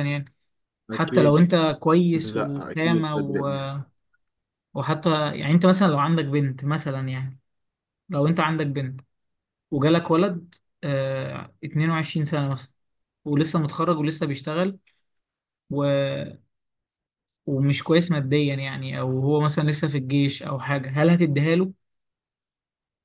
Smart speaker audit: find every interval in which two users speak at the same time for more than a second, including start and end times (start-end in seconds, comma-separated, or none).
2.2-3.5